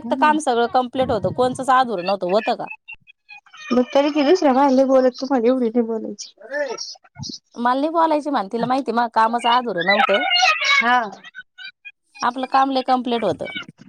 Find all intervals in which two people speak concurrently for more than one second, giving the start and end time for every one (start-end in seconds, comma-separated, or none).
none